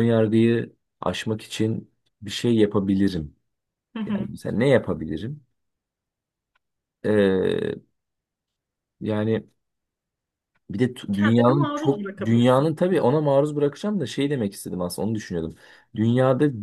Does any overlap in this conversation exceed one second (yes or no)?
yes